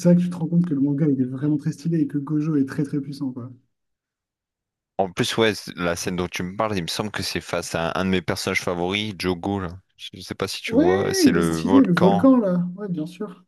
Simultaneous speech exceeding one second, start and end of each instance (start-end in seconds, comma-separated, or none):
10.7-12.3